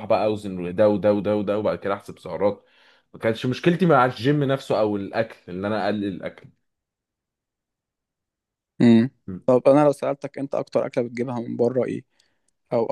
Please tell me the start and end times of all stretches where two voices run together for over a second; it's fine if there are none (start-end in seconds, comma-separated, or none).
none